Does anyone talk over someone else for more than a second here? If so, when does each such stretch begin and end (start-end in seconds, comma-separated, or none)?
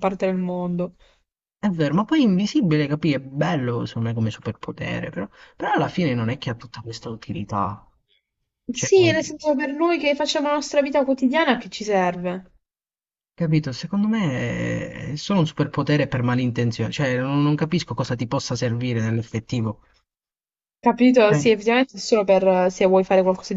none